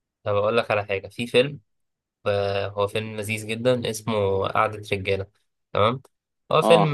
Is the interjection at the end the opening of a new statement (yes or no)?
no